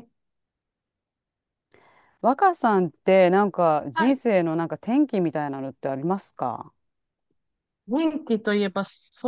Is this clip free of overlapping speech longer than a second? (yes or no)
yes